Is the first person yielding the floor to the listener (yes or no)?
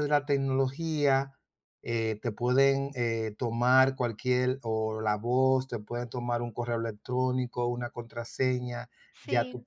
no